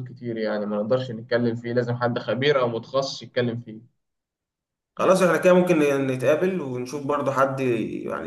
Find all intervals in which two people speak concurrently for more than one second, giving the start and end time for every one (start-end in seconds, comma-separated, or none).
none